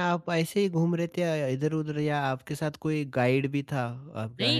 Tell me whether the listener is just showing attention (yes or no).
no